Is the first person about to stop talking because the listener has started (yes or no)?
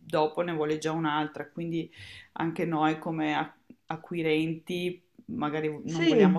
no